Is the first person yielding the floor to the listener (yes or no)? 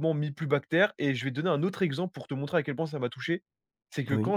no